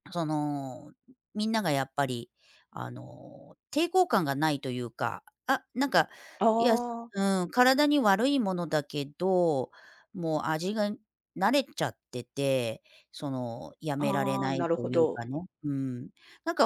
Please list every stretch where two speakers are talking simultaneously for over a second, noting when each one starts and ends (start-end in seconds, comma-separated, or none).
14.0-15.3